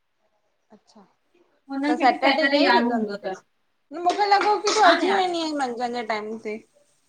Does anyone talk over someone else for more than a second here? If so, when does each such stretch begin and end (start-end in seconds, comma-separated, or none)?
1.9-3.3